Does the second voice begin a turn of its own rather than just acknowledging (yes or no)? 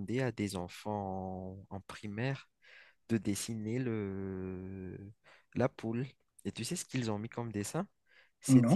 no